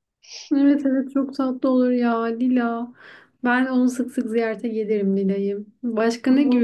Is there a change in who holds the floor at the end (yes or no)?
no